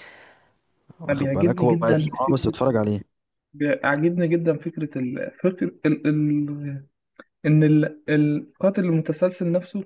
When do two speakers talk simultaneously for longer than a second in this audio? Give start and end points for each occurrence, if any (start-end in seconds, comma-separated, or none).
1.1-2.5